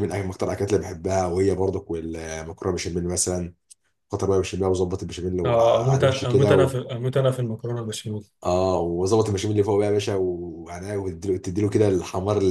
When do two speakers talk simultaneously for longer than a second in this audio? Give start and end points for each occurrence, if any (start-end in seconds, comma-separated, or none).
5.5-6.8